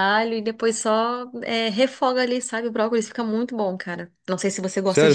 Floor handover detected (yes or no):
yes